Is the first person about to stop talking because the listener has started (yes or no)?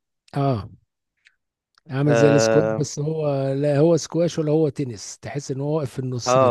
yes